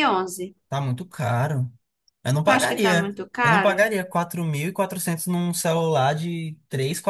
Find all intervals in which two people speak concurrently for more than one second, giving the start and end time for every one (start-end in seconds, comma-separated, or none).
2.4-3.8